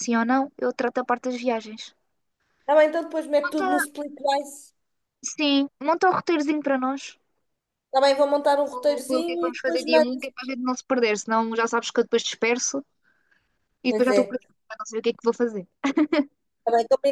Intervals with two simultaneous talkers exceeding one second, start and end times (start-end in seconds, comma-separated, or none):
8.7-10.2